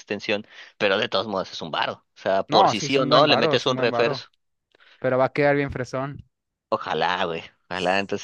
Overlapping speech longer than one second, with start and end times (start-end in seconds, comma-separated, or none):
2.5-4.3